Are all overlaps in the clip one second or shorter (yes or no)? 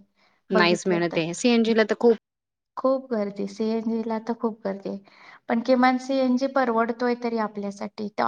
yes